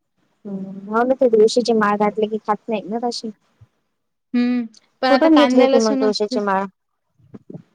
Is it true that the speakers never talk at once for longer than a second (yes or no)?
no